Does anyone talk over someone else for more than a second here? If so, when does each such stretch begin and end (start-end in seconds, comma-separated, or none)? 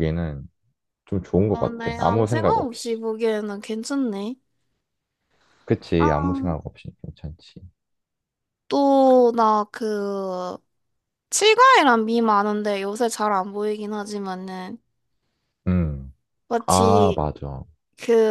1.5-3.0